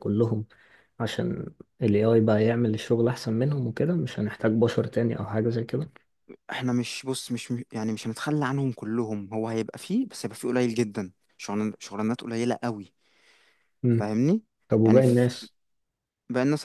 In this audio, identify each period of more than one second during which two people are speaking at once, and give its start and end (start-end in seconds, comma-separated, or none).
none